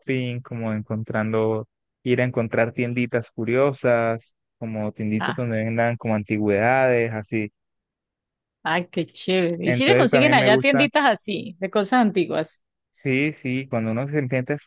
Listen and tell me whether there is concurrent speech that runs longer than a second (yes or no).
yes